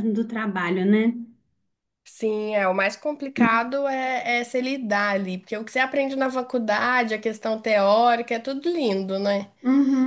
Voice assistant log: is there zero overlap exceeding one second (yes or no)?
yes